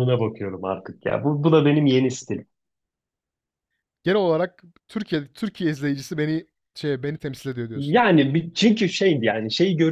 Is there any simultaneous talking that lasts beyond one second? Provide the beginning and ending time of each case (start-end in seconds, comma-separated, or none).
none